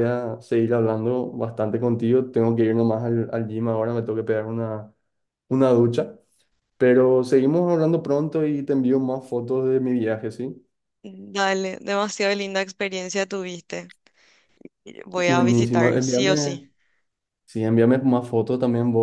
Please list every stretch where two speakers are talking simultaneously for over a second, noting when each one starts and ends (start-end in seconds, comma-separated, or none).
15.2-16.6